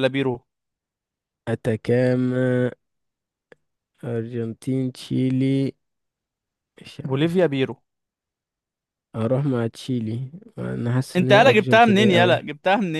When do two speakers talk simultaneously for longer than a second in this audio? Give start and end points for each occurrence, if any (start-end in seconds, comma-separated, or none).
11.2-12.4